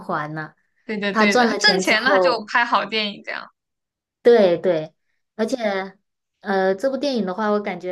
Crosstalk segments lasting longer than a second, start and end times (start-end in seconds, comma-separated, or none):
1.1-2.5